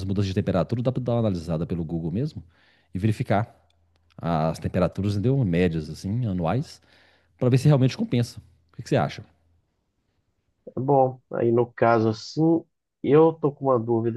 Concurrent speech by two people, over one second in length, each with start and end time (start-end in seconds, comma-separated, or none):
none